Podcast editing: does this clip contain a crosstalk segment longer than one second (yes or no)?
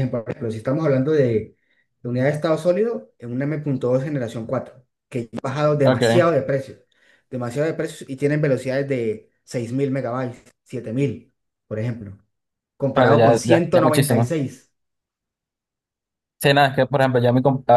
yes